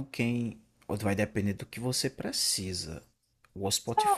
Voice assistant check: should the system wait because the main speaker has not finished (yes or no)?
yes